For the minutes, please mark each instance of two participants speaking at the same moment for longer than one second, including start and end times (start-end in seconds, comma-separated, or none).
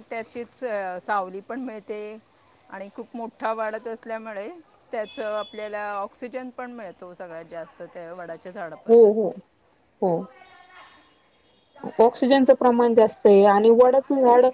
none